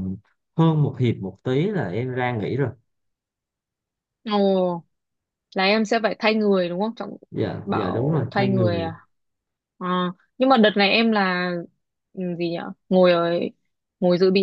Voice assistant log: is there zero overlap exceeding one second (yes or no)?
no